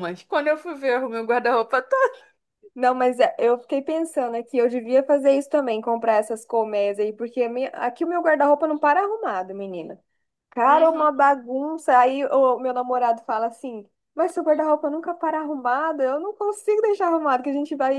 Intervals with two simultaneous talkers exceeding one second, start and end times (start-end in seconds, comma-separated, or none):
none